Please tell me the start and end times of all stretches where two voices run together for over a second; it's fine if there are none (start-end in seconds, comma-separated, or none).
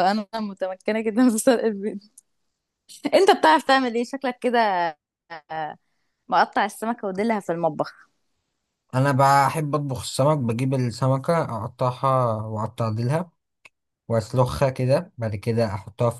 none